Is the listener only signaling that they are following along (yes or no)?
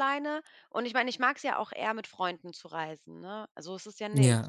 no